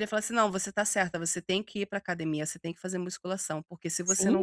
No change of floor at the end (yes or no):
no